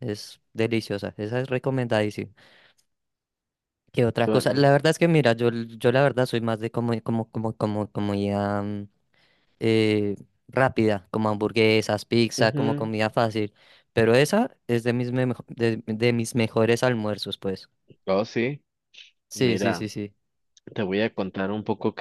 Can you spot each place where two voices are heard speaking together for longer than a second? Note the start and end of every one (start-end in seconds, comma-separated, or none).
none